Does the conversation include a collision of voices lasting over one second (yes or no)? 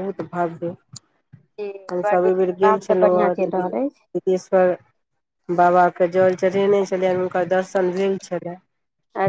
yes